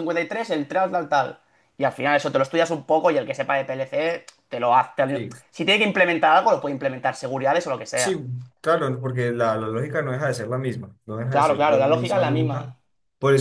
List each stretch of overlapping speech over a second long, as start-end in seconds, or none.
11.3-12.7